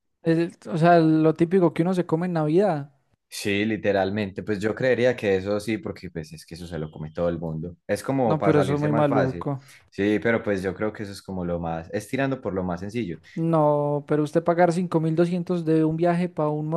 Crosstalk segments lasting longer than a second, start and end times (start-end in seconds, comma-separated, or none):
8.2-9.5